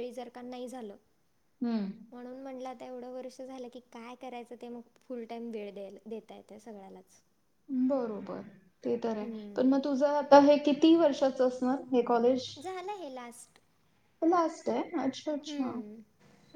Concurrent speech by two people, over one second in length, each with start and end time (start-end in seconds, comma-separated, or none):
none